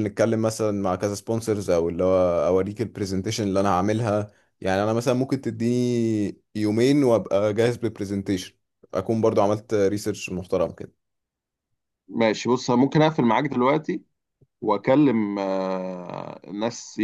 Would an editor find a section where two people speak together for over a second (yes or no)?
no